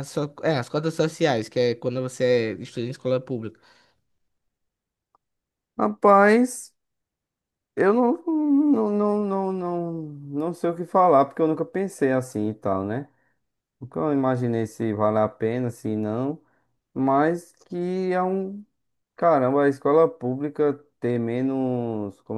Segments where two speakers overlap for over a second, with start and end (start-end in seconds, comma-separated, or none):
none